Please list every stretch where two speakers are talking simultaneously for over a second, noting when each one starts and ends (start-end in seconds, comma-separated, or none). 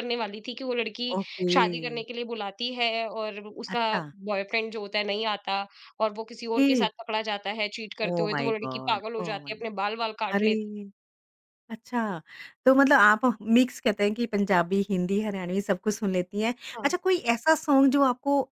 8.0-9.6